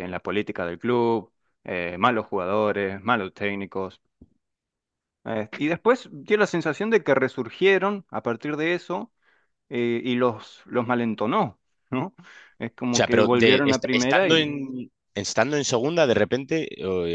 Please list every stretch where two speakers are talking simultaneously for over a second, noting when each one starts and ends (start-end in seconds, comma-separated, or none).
12.9-14.5